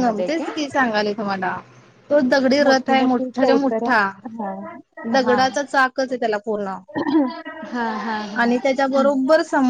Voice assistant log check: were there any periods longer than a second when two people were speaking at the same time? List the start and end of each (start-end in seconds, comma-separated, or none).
2.6-4.0